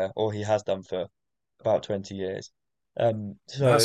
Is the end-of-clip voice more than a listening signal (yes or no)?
yes